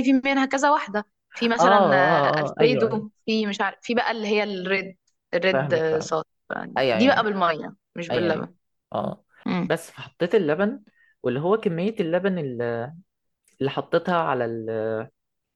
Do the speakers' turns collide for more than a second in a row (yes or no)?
yes